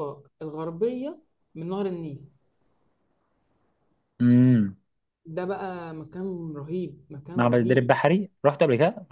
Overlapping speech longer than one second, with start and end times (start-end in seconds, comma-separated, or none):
none